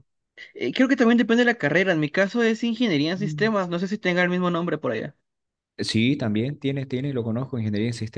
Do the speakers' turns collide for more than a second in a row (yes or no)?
no